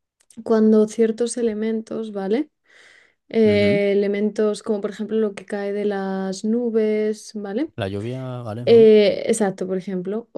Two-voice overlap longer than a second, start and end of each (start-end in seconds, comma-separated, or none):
none